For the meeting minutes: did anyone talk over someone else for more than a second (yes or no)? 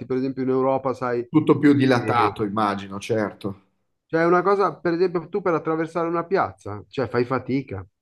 no